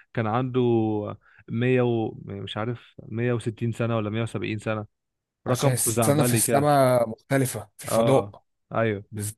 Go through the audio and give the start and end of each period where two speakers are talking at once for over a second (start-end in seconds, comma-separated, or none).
5.5-6.7